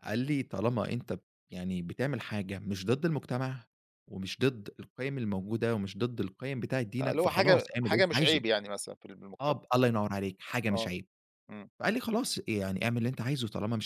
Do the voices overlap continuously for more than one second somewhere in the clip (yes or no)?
yes